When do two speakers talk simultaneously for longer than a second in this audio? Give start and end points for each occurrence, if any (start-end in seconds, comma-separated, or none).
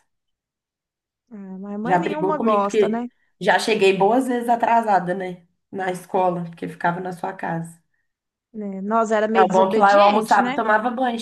1.8-3.1, 9.3-10.6